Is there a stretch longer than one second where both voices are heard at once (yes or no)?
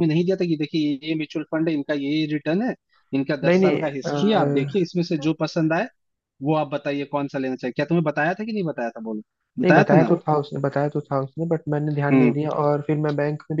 yes